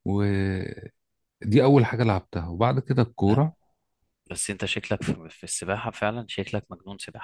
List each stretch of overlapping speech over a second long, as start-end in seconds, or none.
none